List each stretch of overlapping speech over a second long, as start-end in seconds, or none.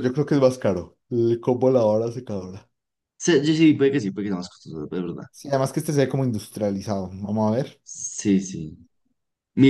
none